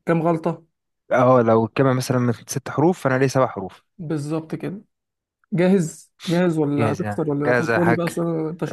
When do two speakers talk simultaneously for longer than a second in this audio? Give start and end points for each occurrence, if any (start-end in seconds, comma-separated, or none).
6.8-8.0